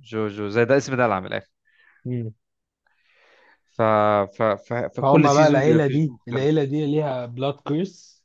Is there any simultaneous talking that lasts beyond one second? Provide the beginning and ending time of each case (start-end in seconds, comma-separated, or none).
5.0-6.5